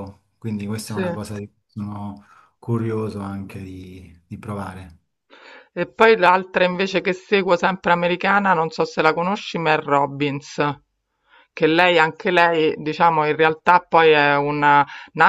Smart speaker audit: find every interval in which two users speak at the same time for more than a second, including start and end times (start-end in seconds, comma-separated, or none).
none